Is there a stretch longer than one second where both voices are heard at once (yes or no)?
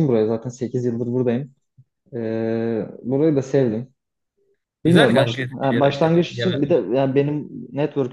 yes